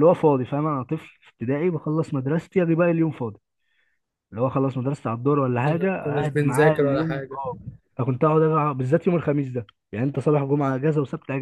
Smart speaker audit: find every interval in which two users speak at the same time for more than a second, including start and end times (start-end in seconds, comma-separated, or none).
5.7-7.4